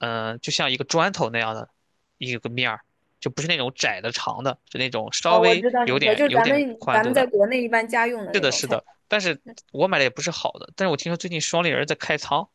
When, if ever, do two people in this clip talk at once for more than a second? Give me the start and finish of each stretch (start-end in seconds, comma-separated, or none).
5.2-7.3